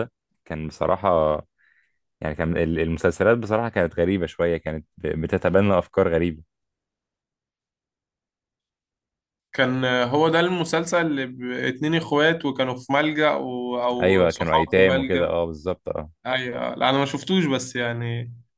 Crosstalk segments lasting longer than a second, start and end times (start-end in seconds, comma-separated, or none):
14.0-15.3